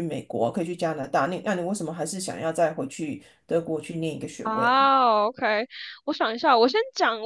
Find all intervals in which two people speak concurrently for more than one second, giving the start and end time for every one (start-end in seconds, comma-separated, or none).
none